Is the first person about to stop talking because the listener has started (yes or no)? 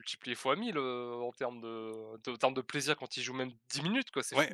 yes